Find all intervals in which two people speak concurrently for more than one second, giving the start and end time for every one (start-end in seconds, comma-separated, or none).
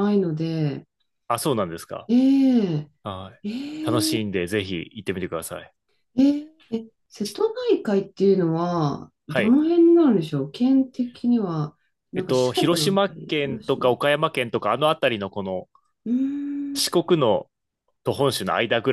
12.1-14.0